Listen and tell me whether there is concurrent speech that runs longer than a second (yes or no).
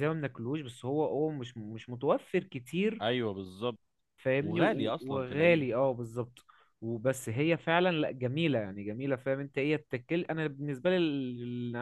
yes